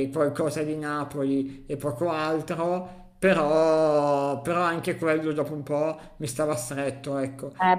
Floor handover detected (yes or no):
yes